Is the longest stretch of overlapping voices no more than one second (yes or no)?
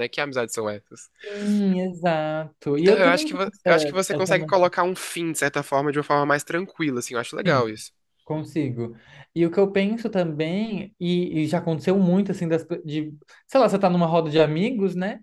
no